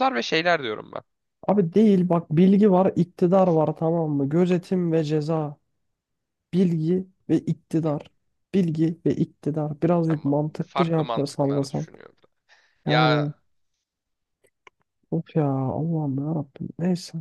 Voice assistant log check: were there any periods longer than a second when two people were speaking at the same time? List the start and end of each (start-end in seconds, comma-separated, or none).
10.1-11.9